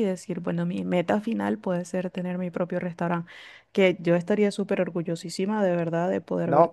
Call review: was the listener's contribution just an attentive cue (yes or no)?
no